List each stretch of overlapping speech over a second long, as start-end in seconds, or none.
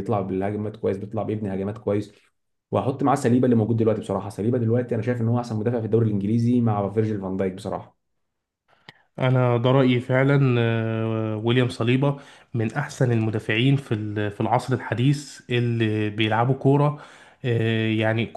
none